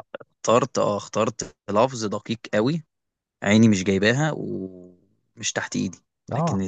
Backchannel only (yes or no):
yes